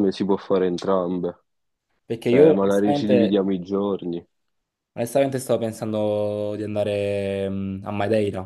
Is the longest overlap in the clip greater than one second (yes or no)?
yes